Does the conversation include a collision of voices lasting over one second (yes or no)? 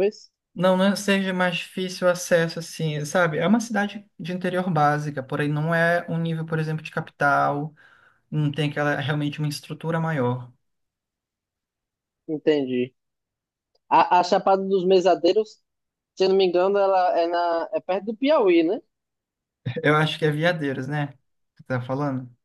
no